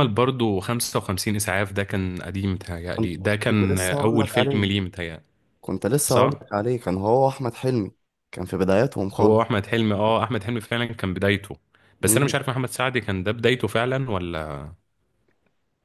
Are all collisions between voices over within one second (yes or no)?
no